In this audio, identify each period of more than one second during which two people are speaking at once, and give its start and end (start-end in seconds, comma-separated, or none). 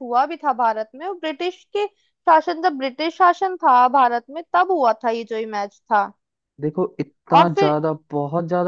none